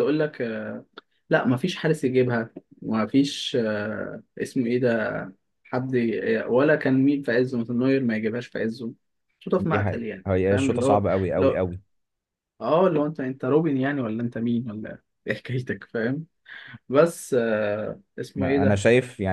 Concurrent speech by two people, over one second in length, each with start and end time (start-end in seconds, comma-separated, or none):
9.6-11.6